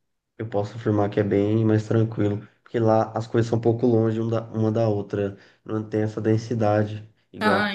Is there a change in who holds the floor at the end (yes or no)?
yes